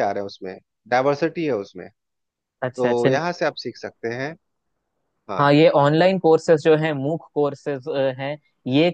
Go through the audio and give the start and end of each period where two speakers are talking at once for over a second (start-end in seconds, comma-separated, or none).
none